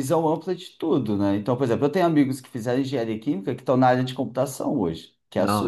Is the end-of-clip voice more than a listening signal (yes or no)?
yes